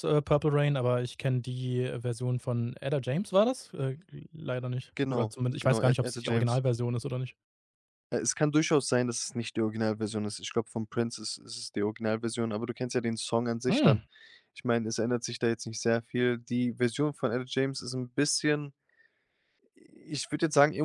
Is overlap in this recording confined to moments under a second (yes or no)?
no